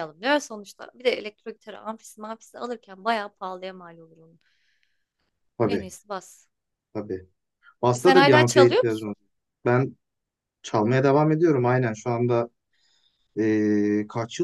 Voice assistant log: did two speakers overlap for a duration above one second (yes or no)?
yes